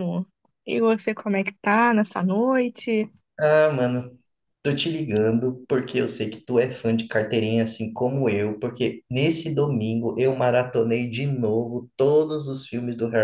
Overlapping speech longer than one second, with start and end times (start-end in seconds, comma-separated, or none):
none